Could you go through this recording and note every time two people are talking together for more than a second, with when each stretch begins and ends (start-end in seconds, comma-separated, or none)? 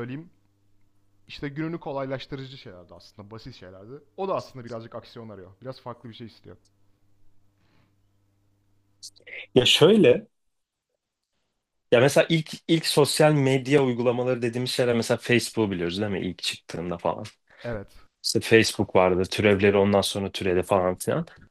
none